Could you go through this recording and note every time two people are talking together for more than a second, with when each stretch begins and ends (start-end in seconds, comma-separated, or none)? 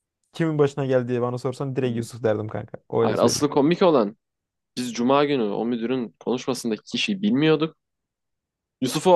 none